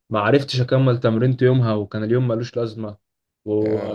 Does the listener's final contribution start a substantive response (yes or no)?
no